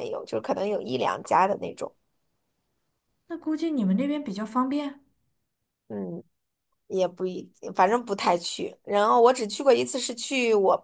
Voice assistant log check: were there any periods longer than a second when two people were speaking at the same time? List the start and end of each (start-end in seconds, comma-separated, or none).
none